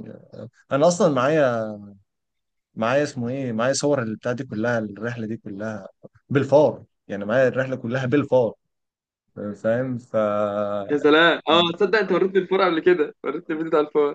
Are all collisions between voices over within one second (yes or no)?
yes